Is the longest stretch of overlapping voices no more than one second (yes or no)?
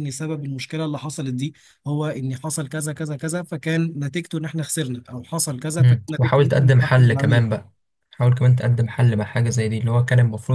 no